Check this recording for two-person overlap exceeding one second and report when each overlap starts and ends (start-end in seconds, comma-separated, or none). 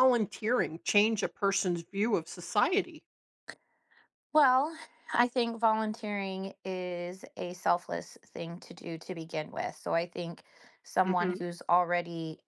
none